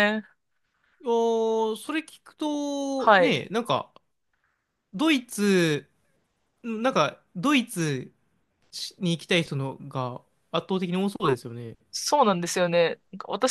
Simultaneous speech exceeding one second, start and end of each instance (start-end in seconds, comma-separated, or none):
none